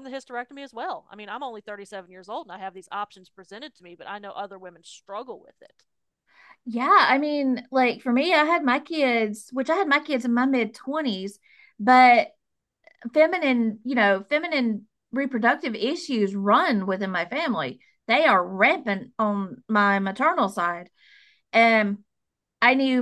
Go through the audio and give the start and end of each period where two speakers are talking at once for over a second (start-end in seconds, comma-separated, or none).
none